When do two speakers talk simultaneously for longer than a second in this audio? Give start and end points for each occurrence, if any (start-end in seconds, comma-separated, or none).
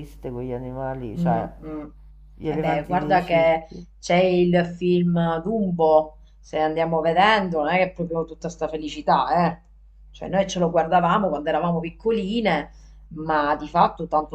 2.5-3.9